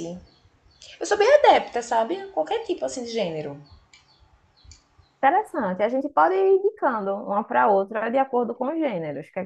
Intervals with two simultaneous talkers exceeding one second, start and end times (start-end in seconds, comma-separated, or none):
none